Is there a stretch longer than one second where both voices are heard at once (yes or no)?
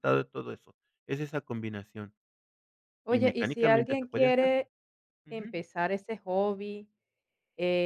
yes